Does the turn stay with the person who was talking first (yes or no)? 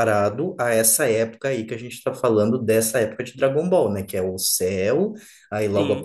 yes